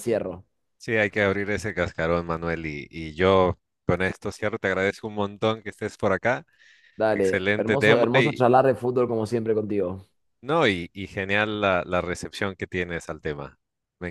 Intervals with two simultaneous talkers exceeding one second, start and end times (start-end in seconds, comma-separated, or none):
7.1-8.4